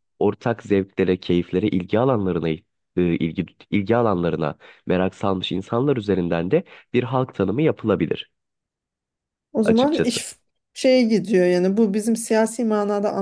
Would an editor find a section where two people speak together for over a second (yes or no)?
no